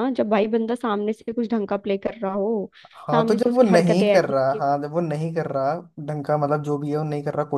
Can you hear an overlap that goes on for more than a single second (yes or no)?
yes